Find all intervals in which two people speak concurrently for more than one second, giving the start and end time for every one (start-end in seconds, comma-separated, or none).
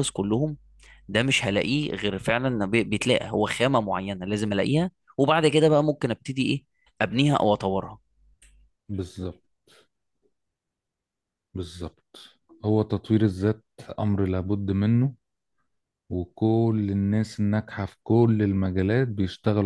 none